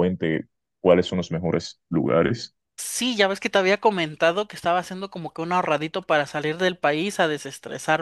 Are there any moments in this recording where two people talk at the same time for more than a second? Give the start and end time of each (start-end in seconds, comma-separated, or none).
none